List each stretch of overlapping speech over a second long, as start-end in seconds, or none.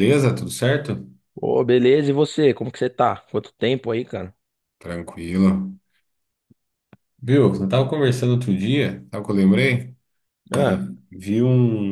none